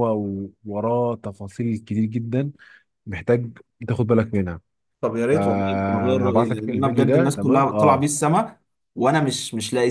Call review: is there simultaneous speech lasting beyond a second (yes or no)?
yes